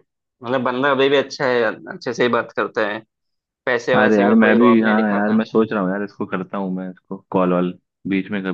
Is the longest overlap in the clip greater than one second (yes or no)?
yes